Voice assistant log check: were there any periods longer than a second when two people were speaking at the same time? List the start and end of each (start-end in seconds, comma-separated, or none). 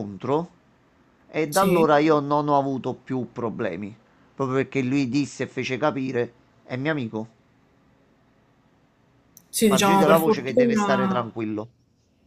9.5-11.3